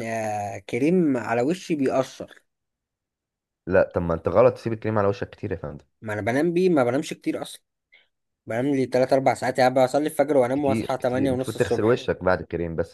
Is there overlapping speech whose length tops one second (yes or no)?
yes